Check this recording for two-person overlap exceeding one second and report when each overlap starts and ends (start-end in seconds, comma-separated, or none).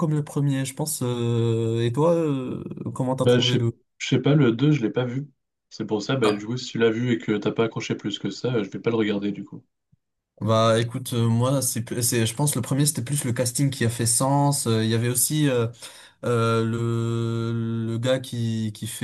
none